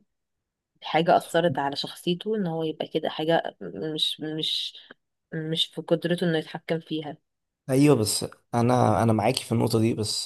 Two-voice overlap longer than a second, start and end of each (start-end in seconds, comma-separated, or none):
none